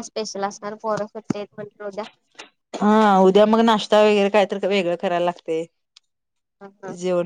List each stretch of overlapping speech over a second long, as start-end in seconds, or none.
none